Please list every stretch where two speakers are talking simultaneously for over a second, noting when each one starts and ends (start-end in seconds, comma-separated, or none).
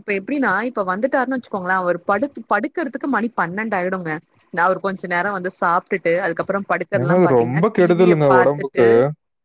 7.0-8.8